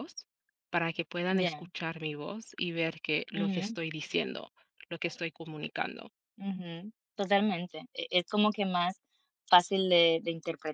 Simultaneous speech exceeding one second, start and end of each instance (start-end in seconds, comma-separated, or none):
none